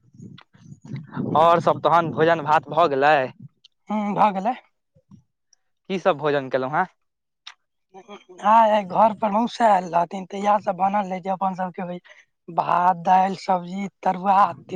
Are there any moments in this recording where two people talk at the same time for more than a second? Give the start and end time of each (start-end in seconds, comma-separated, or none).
none